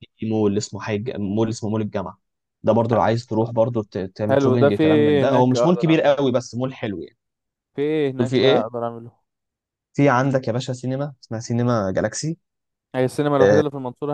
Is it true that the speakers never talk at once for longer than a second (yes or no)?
no